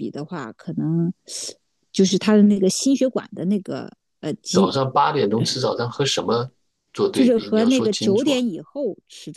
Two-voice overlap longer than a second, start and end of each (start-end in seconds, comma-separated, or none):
7.1-8.4